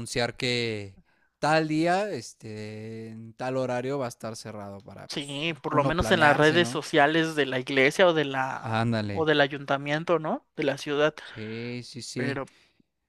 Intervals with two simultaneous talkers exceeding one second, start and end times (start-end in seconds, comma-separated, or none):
5.1-6.8